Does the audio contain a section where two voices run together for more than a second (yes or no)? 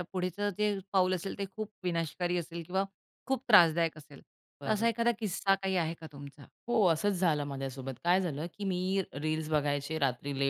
no